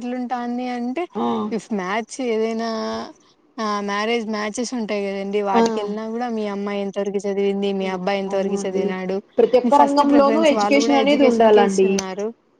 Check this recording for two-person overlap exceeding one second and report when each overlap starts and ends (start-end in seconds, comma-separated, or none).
9.8-11.9